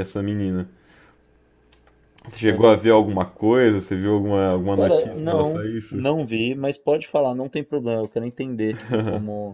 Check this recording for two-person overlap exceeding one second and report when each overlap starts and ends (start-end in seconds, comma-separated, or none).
4.7-6.0